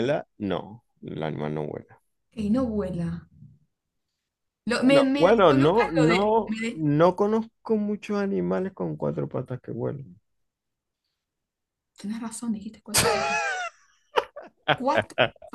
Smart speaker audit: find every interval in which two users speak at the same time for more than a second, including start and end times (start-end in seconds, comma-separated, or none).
4.8-6.8